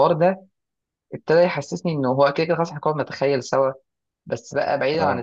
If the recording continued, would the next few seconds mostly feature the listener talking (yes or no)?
no